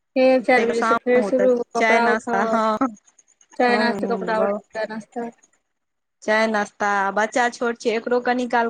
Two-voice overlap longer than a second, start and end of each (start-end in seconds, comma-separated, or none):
0.5-2.6